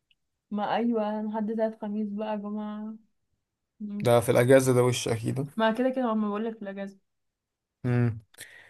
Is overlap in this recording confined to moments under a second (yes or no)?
yes